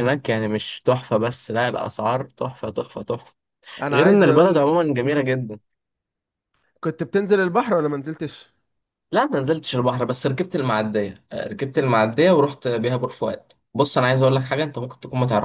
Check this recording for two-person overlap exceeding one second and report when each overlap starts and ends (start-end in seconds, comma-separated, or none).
3.9-5.3